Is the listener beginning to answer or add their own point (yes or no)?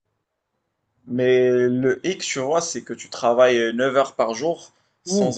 no